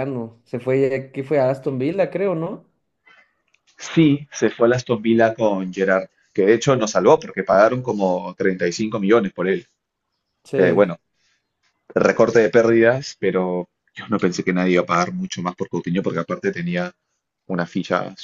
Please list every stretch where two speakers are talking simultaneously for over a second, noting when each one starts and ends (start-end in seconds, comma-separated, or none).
none